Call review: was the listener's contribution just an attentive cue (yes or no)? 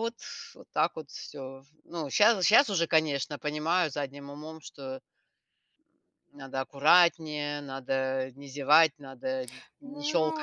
no